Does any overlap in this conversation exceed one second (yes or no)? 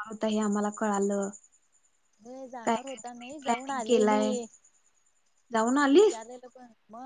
yes